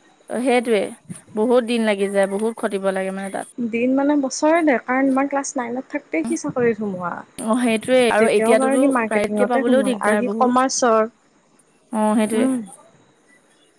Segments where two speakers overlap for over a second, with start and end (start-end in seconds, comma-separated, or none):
8.2-10.7